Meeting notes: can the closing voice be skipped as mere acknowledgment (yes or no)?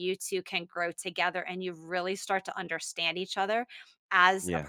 yes